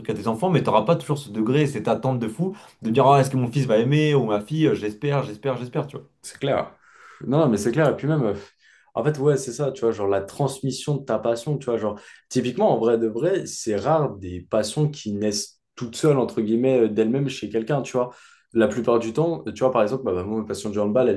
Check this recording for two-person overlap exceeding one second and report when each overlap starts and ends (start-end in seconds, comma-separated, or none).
none